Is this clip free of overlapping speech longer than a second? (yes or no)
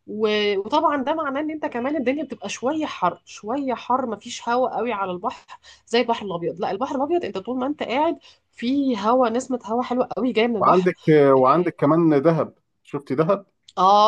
yes